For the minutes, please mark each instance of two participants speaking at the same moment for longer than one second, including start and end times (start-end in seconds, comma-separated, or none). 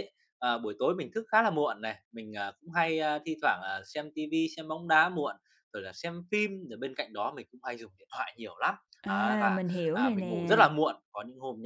9.0-10.6